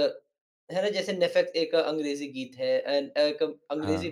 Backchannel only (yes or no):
yes